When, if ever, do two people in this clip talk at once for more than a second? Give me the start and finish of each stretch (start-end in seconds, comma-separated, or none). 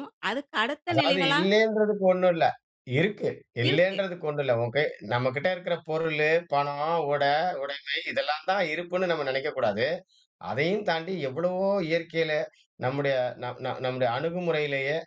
none